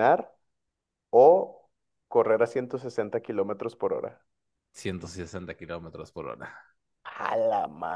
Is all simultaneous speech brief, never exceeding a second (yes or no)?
yes